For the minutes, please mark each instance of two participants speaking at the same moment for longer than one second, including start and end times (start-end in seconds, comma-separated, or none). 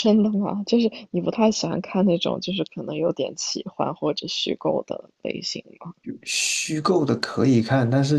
none